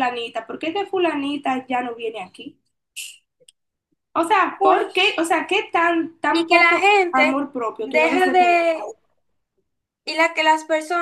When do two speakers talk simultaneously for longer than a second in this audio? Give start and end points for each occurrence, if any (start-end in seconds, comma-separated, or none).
6.3-8.6